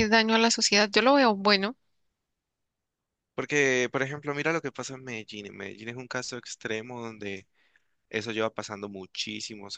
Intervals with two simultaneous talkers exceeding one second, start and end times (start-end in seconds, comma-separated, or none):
none